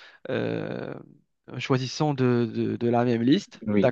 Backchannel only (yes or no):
no